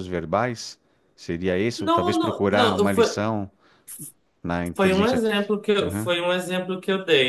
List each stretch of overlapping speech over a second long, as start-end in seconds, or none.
1.8-3.2, 4.8-6.1